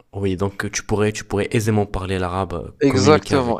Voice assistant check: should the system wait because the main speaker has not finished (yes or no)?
no